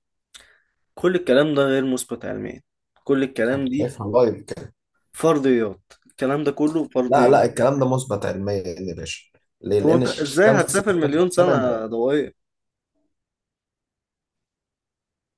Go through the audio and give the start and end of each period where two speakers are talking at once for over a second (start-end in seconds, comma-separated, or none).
9.8-11.8